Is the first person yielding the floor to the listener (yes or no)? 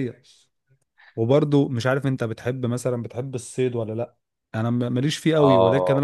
yes